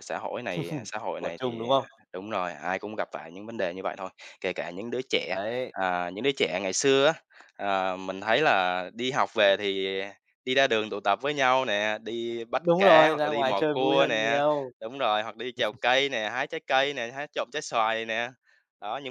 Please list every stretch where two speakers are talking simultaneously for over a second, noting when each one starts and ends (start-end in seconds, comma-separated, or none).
12.5-14.4